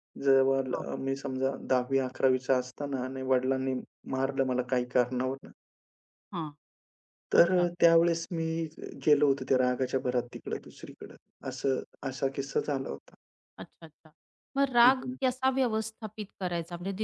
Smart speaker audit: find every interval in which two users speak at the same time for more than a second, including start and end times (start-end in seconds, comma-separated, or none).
none